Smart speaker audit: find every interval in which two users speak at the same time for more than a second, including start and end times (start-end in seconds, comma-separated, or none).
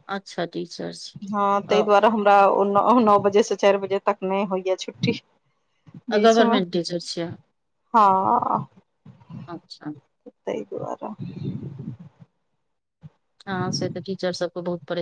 none